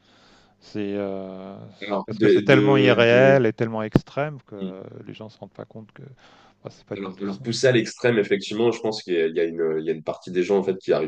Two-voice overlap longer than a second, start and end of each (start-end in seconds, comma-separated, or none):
1.8-3.4